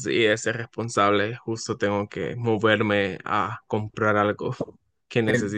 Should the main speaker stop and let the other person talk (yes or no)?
no